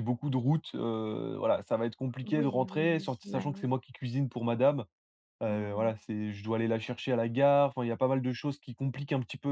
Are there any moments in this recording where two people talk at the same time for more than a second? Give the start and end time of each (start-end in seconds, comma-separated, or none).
2.2-3.7